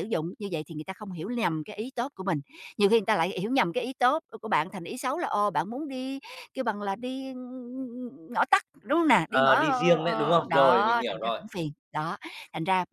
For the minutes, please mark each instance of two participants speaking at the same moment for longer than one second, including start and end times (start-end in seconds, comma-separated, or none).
9.3-11.4